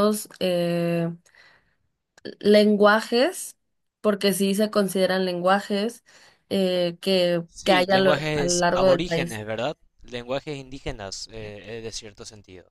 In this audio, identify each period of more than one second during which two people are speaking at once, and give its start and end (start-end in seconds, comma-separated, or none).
7.5-9.4